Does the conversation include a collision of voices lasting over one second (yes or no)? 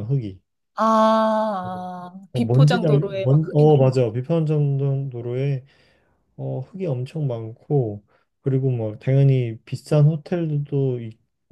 yes